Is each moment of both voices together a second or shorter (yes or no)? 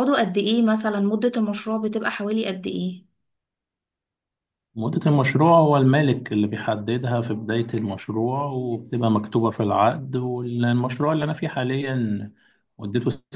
yes